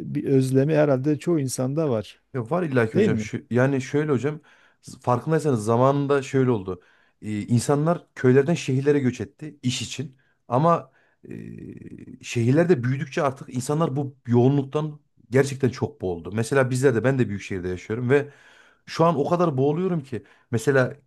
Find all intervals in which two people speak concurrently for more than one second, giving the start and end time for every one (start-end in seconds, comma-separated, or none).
none